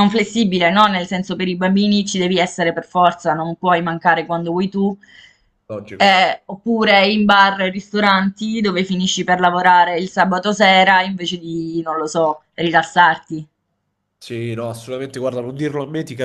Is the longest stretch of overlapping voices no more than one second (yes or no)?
yes